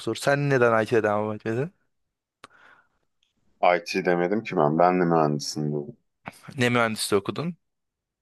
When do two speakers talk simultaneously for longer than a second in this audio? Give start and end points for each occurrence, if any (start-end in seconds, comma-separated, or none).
none